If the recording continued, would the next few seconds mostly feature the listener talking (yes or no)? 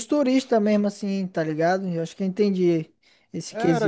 yes